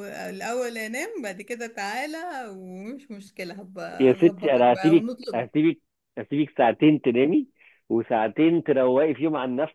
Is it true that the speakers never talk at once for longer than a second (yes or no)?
no